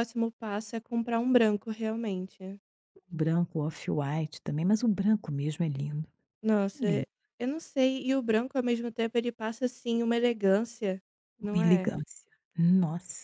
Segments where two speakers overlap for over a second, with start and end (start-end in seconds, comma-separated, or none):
none